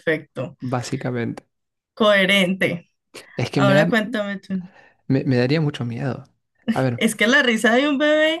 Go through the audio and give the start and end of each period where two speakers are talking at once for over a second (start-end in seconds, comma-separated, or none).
none